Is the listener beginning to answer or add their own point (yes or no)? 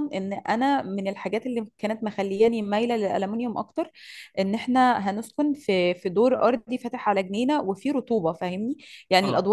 no